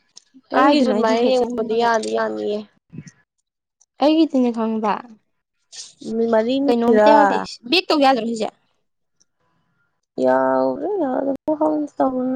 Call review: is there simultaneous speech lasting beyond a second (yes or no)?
yes